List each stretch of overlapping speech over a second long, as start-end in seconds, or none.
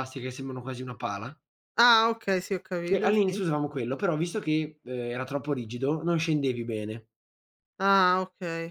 none